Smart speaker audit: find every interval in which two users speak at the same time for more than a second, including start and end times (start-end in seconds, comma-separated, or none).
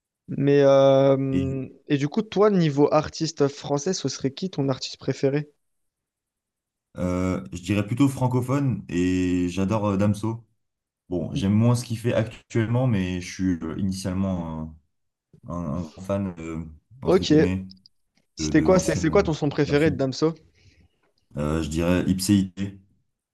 18.4-20.0